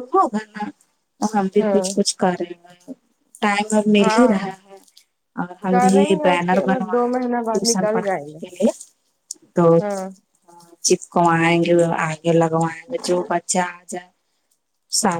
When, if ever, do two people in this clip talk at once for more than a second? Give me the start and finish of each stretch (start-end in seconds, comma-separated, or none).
5.7-8.4